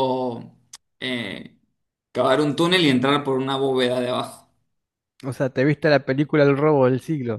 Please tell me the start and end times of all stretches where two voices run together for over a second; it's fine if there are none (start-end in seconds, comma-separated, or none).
none